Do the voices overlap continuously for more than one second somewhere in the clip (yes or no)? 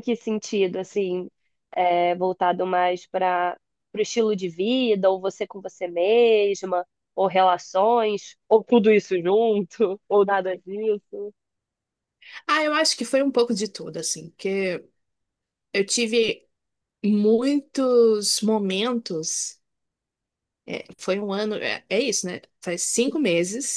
no